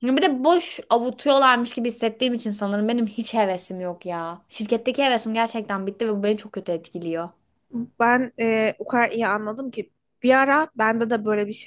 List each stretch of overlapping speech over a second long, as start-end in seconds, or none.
none